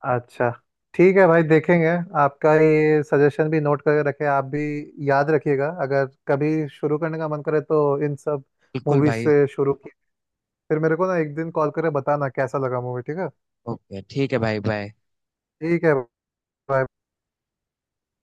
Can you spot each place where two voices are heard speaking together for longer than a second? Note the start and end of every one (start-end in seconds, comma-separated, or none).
none